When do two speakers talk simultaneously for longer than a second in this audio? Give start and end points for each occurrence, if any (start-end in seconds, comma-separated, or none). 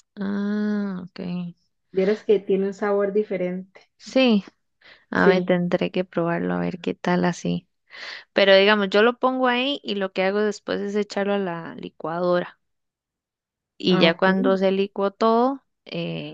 none